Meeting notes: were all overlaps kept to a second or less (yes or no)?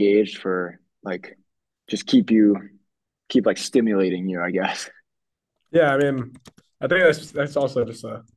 yes